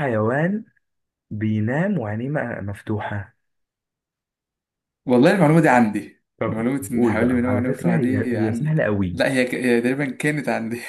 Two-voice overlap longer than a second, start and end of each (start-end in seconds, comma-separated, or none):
6.4-9.2